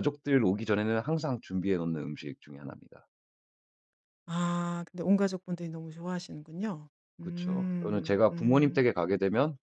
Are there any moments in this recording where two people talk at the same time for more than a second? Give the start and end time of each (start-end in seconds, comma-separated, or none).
7.2-8.8